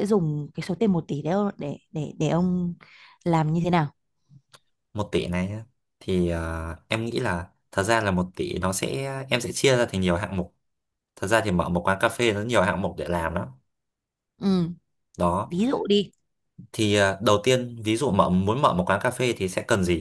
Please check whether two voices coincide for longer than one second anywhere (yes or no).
no